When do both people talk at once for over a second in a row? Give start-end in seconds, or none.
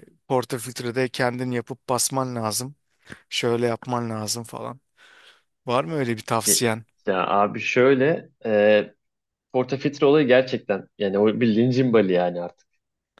none